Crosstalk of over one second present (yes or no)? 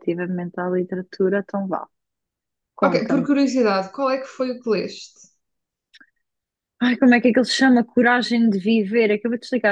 no